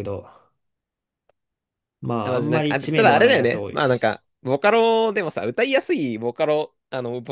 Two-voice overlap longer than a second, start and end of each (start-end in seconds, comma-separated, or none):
2.2-4.1